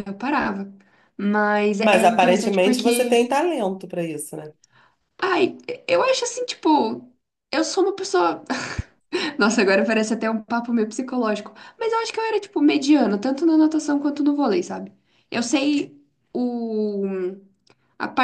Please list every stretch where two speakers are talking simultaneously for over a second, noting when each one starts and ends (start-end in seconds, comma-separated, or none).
1.8-3.2